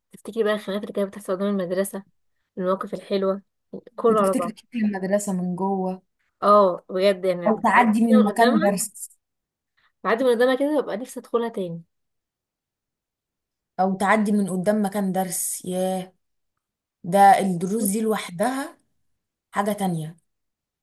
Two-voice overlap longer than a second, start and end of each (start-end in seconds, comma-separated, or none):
7.5-8.8